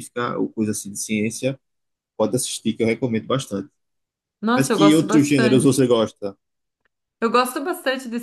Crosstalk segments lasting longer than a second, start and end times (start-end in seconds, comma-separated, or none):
4.5-5.9